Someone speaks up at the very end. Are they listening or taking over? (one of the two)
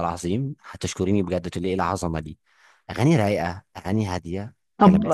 taking over